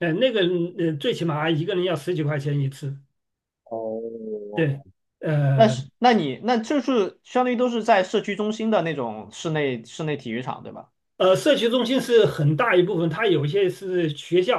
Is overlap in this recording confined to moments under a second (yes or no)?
yes